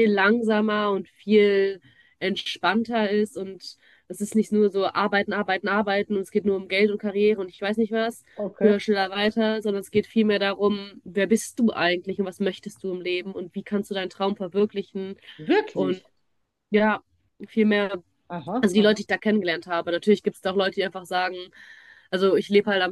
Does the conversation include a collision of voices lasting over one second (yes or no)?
no